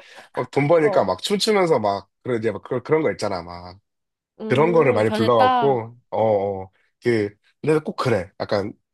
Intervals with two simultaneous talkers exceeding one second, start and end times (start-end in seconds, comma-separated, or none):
4.5-5.8